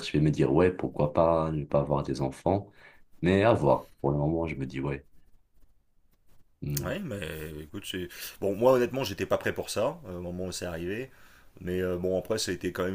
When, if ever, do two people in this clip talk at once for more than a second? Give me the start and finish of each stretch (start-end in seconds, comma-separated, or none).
none